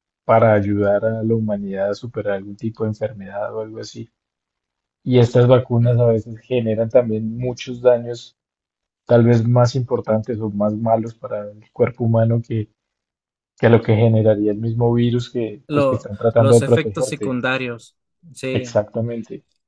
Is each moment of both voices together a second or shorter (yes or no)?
no